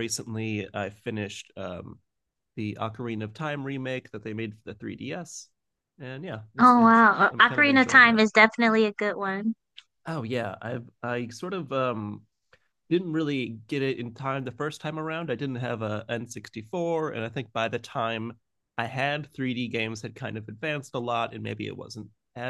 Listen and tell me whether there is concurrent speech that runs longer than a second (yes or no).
yes